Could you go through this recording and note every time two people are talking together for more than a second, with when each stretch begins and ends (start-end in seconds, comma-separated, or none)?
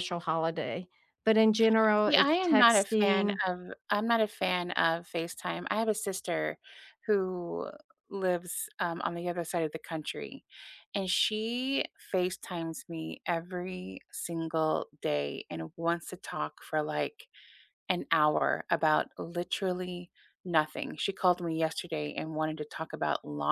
2.1-3.4